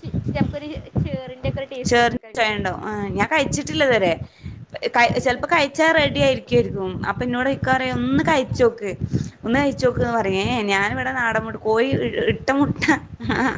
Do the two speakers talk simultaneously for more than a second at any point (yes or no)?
yes